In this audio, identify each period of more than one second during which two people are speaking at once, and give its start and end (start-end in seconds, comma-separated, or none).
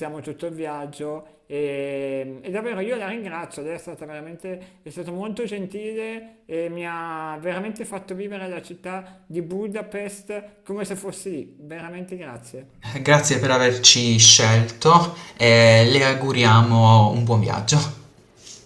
none